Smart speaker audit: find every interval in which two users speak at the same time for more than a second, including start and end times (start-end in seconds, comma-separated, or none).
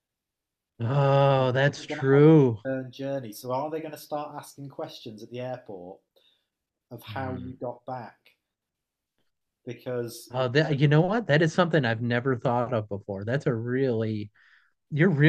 1.4-2.6